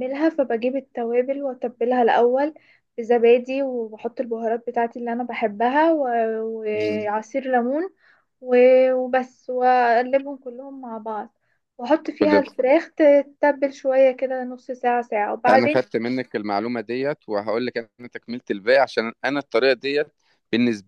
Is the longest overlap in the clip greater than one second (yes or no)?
no